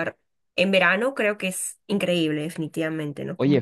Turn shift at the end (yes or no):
yes